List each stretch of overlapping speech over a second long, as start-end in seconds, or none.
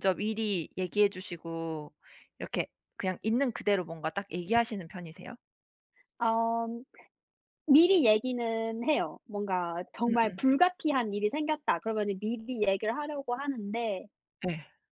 none